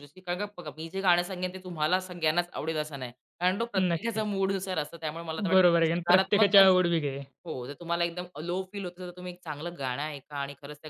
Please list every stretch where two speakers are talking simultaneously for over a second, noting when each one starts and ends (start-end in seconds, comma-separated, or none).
5.5-6.7